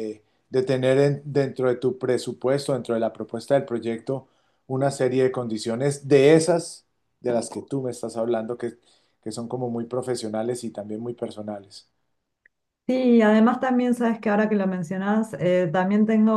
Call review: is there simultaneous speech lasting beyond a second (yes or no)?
no